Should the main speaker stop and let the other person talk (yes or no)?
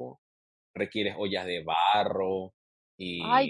yes